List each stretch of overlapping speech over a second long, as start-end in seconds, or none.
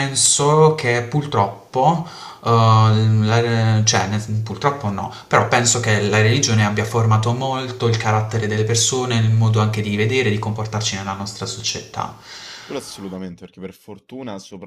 none